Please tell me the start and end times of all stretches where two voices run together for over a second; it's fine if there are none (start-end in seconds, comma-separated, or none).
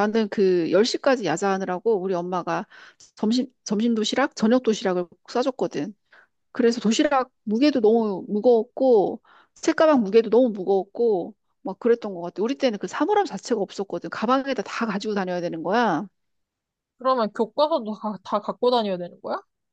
none